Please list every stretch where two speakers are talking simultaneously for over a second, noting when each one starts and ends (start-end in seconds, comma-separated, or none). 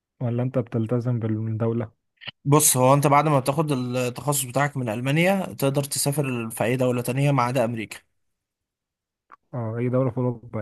none